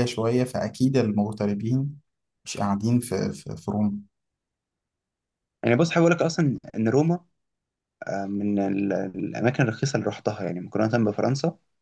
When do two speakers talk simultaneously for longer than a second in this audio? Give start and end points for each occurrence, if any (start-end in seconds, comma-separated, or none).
none